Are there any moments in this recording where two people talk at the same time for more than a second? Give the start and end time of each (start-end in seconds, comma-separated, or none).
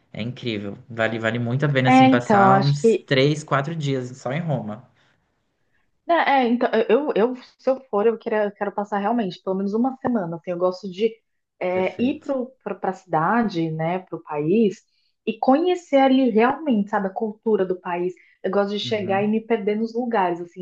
1.9-3.1